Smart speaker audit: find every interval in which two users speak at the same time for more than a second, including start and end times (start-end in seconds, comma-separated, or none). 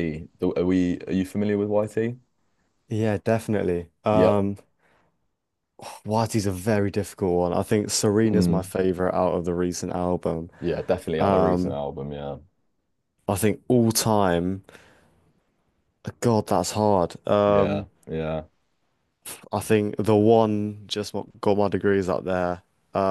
none